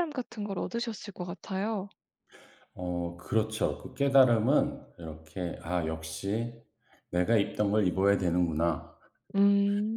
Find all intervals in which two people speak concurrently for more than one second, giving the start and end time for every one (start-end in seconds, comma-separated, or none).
none